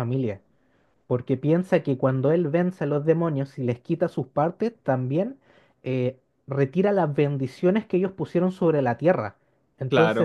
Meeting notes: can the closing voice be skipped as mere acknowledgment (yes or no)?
no